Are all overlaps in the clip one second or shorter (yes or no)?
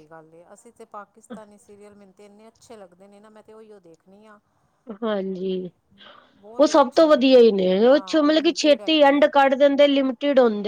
no